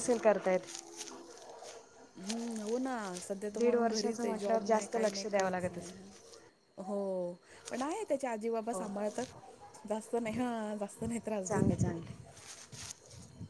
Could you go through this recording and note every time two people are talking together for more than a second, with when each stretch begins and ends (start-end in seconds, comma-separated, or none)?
3.5-6.0